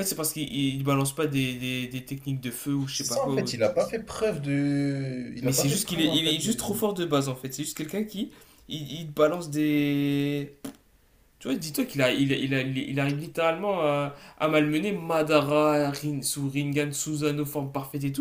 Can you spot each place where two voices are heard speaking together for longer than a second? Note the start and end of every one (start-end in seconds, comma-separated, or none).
5.4-6.7